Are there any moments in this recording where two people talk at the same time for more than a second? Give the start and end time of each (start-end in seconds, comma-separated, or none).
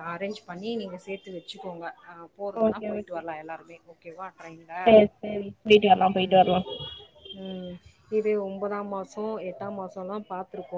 none